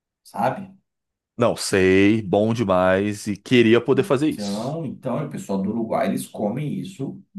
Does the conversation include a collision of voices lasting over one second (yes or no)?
no